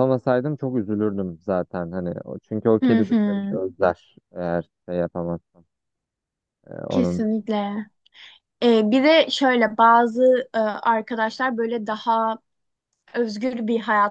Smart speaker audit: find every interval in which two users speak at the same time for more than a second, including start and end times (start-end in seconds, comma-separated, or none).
none